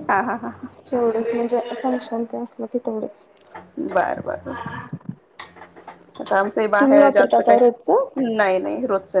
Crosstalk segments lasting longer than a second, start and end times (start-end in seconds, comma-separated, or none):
6.8-8.1